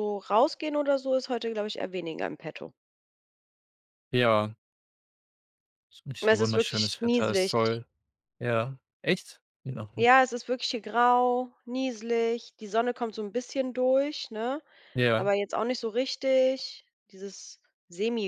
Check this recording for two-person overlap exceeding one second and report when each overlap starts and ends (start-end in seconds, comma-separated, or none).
6.2-7.5